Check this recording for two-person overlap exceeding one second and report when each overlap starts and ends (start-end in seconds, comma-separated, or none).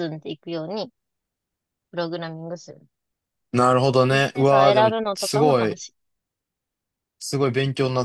4.1-5.8